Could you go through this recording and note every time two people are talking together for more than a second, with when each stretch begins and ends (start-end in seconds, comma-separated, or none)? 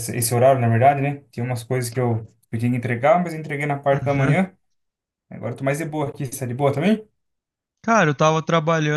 none